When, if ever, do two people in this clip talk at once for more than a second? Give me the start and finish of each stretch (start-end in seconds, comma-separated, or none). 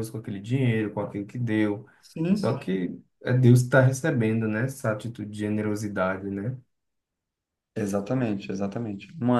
none